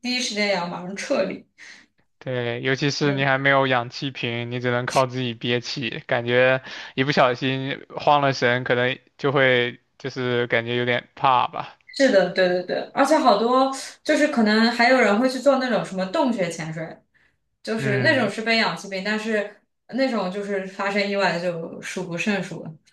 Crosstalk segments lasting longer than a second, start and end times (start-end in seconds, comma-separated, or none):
none